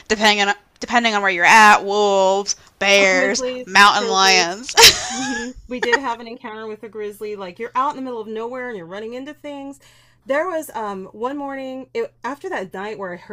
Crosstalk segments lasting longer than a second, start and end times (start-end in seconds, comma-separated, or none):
3.0-4.6